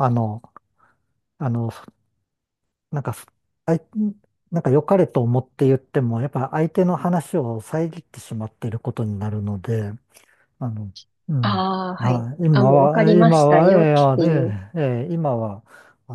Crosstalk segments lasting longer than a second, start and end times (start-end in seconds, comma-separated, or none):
11.4-14.6